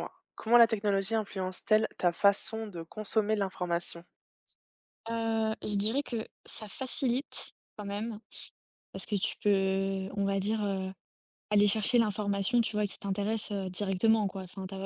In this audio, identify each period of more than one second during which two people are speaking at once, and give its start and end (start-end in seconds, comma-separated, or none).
none